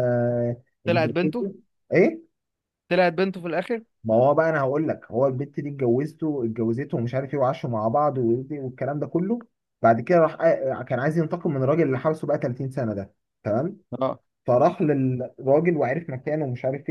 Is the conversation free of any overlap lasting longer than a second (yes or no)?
yes